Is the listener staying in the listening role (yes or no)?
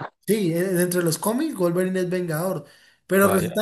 yes